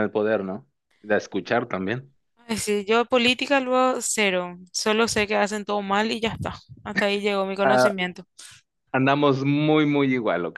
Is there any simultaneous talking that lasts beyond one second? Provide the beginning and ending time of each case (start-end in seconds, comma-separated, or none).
none